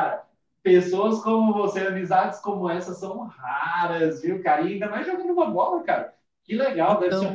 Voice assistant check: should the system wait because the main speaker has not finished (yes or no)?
yes